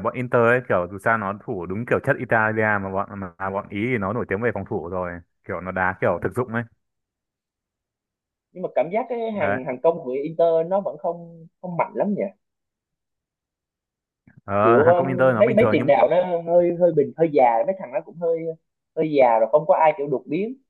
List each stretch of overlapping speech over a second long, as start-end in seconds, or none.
14.6-15.9